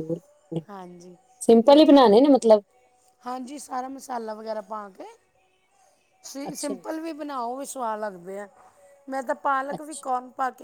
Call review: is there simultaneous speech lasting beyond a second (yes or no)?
no